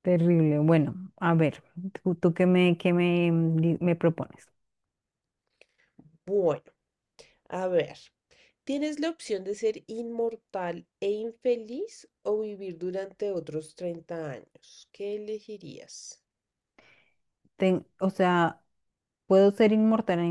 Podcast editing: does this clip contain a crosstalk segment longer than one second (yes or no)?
no